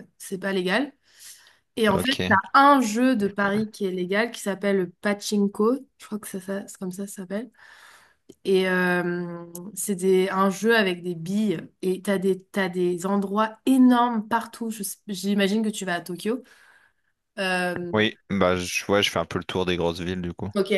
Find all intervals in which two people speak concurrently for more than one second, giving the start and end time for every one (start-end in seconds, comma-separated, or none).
none